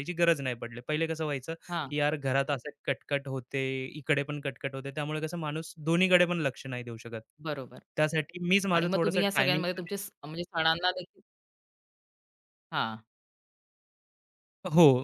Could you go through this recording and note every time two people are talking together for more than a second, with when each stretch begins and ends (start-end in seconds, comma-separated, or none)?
8.7-9.9